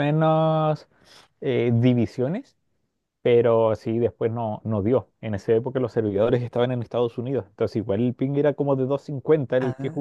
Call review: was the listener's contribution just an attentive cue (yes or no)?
no